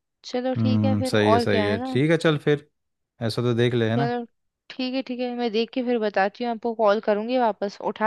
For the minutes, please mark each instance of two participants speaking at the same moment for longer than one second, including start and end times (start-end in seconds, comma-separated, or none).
0.6-2.0